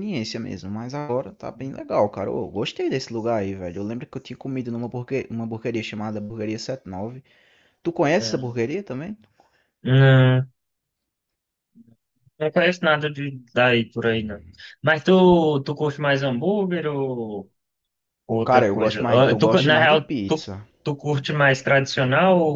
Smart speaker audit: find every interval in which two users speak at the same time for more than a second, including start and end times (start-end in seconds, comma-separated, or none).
18.4-20.5